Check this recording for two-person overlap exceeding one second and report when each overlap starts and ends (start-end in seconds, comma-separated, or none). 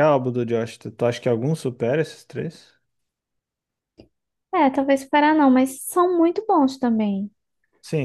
none